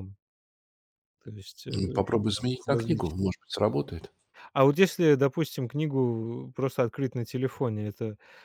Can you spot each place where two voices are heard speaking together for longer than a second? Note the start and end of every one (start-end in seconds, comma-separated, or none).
1.7-3.2